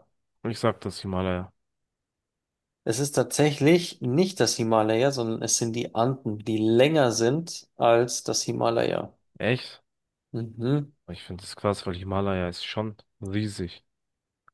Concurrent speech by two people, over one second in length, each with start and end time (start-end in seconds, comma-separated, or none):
none